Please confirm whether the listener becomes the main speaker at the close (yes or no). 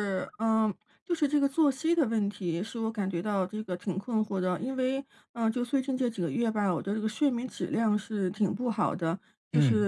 no